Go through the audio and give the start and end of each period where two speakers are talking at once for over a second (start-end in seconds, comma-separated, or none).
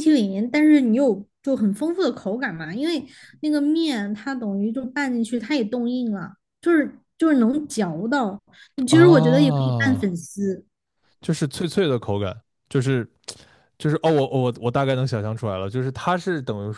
8.9-10.2